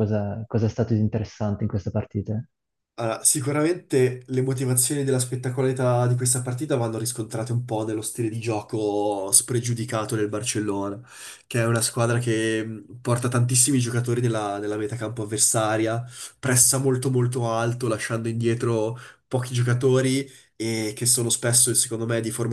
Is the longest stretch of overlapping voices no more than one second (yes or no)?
yes